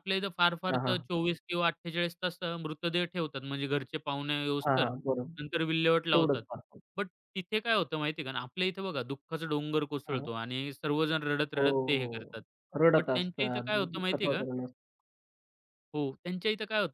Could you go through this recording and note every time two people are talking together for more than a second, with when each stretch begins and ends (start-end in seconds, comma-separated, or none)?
13.0-14.4